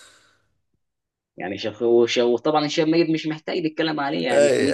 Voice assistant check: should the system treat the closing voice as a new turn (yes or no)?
yes